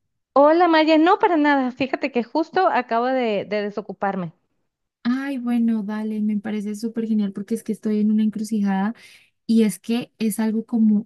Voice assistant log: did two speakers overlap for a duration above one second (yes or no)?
no